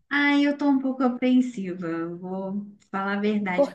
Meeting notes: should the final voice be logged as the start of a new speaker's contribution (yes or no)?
no